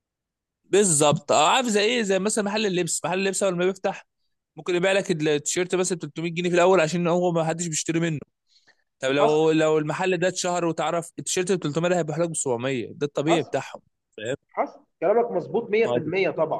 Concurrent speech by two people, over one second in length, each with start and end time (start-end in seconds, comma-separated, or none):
none